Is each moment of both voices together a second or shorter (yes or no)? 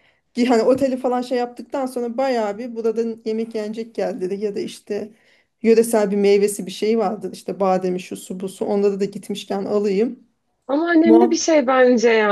yes